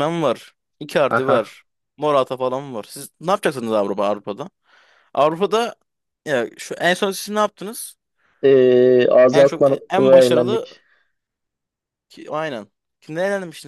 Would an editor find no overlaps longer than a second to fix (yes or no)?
no